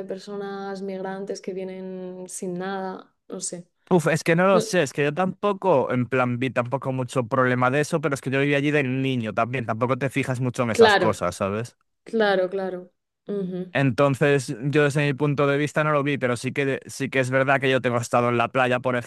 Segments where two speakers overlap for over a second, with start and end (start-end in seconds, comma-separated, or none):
none